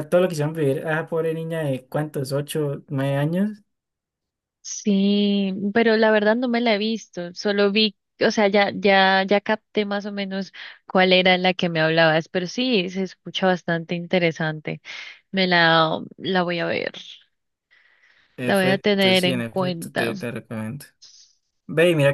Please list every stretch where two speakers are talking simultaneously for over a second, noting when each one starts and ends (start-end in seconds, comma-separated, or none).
18.4-20.1